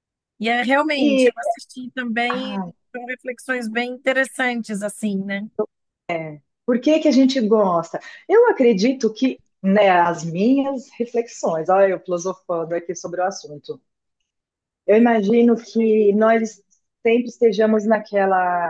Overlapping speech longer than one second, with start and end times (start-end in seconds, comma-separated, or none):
none